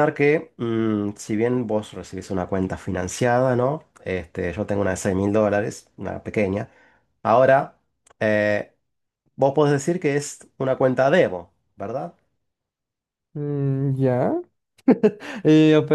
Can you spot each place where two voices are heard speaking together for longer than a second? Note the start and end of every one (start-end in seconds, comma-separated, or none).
none